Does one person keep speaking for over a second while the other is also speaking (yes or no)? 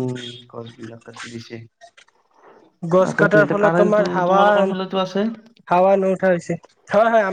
yes